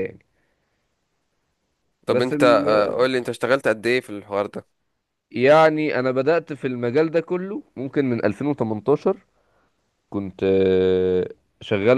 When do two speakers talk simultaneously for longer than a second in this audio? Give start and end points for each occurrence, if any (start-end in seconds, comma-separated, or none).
none